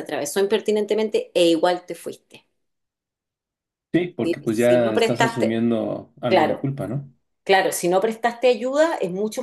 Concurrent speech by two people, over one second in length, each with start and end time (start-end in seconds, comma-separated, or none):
4.2-5.6